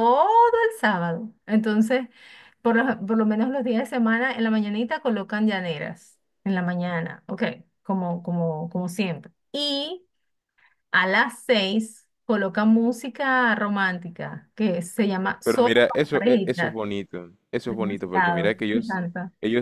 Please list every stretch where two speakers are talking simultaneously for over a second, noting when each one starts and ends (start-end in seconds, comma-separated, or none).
15.4-16.8, 17.6-19.0